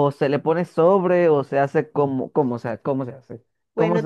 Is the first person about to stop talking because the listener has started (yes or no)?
yes